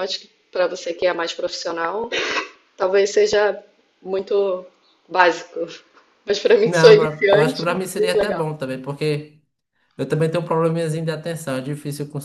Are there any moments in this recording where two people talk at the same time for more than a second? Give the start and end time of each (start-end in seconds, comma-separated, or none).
6.6-8.5